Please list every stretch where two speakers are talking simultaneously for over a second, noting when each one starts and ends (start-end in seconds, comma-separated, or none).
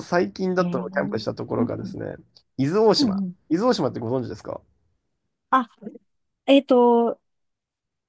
0.6-1.9